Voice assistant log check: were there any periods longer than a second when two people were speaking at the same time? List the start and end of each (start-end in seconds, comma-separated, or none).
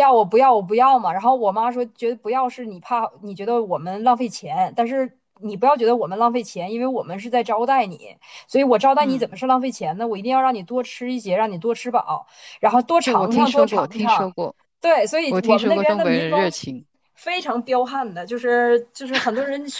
13.0-14.3, 15.3-16.5